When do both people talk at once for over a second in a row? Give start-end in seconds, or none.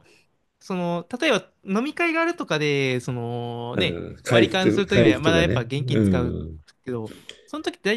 3.7-6.0